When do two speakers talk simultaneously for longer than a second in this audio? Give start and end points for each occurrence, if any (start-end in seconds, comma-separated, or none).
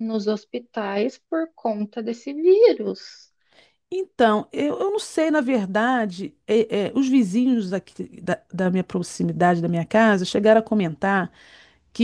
none